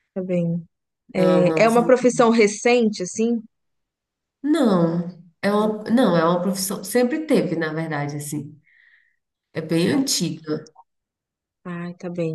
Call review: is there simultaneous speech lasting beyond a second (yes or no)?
no